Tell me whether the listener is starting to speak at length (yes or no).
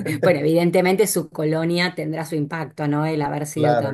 no